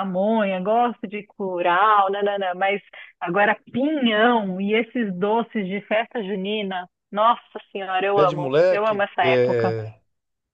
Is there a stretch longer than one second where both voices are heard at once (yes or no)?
yes